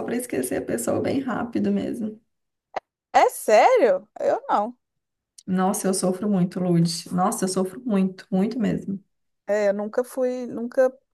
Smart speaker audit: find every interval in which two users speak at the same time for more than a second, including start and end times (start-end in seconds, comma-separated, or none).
none